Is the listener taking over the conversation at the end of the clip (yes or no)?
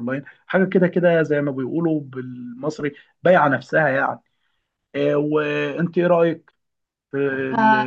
yes